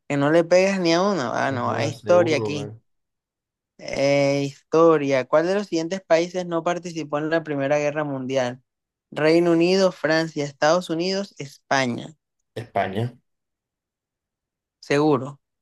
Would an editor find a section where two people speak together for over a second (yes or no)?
yes